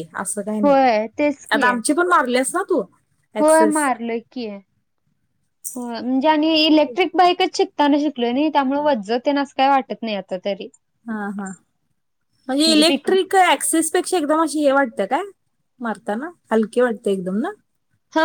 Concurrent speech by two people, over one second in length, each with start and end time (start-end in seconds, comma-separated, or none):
none